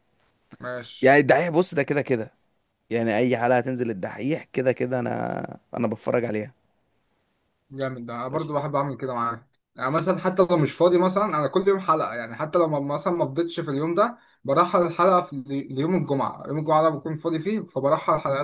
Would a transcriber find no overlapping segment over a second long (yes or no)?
yes